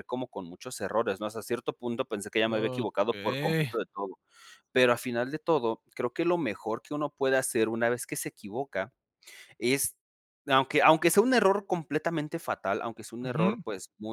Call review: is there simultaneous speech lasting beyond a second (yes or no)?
yes